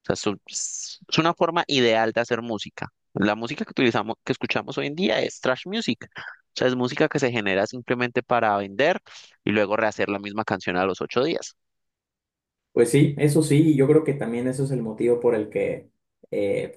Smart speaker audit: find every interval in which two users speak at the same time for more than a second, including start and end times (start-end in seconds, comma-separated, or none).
none